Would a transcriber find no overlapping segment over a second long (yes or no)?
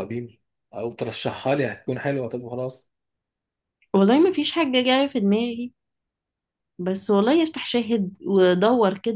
yes